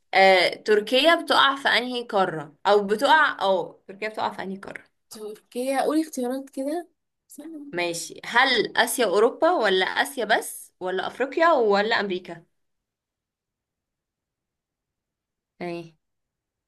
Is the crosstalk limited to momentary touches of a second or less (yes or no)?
yes